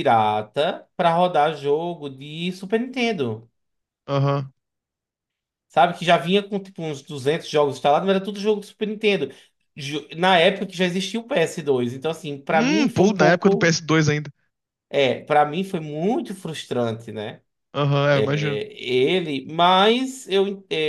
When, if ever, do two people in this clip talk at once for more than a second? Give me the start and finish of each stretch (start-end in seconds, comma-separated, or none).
12.5-13.8